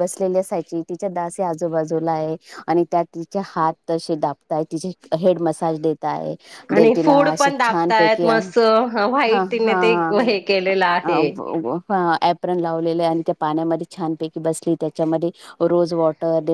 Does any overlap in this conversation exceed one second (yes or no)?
yes